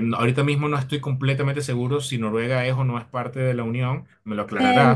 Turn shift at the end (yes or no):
yes